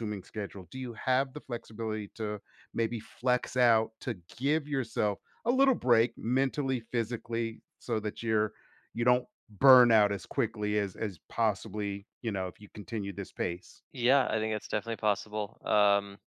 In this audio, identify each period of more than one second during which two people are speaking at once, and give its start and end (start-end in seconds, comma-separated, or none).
none